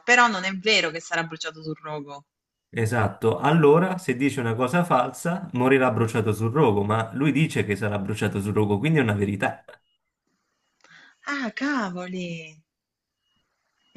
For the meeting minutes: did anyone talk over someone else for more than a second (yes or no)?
no